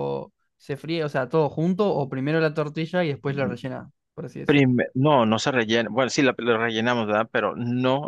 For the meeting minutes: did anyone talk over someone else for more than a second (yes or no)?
no